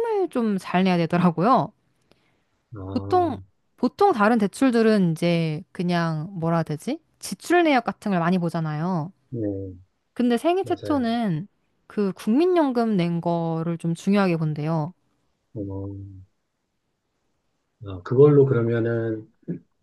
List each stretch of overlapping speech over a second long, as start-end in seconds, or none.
none